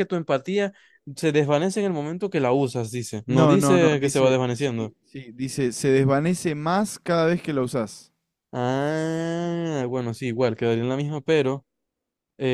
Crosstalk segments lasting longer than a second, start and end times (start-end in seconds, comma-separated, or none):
3.3-4.9